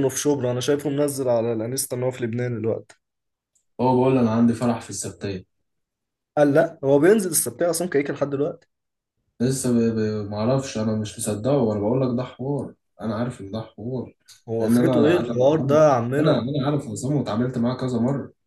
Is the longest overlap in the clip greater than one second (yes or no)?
yes